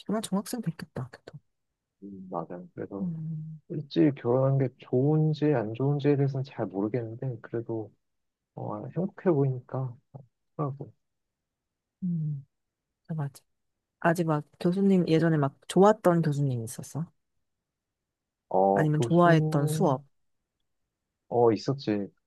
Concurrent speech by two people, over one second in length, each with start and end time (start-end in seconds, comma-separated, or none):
18.7-19.9